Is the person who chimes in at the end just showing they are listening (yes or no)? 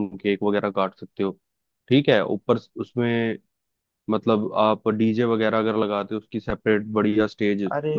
no